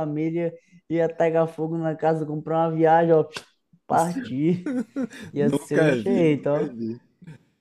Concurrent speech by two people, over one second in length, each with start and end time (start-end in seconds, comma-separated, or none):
5.4-6.7